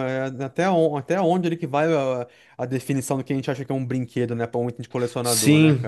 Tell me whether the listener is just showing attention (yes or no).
no